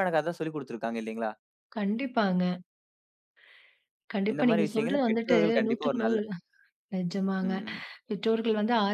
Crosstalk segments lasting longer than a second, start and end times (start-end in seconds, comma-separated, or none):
4.3-6.2